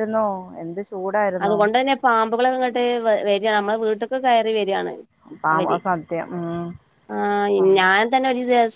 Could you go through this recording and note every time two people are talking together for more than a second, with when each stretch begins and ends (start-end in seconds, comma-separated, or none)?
none